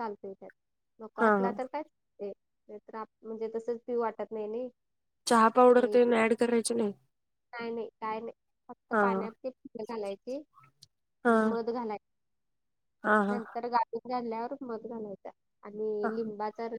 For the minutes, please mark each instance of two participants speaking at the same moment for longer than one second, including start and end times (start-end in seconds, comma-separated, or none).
none